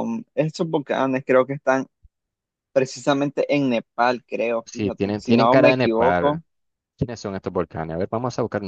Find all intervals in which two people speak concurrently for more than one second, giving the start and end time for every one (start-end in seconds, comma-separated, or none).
4.7-6.4